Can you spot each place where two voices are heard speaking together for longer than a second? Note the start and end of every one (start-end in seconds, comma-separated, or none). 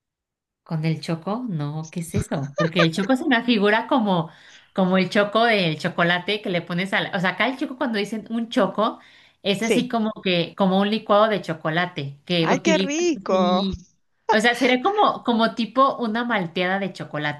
12.4-13.7